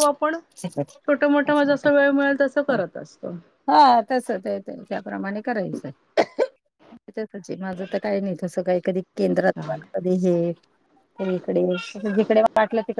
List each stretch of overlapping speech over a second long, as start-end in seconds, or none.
none